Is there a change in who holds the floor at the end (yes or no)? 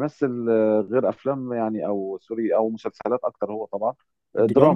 no